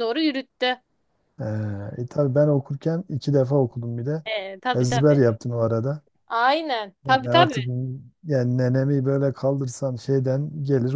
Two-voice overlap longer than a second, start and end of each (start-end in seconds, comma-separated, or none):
none